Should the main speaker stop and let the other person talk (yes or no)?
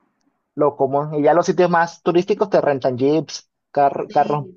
yes